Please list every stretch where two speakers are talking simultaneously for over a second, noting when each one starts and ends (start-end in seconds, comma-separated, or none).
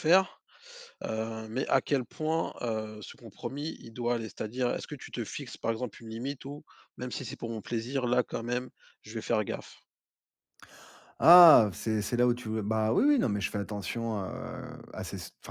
none